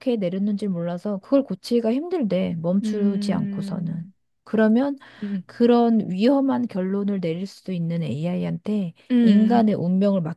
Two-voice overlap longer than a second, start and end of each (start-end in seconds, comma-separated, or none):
2.8-4.1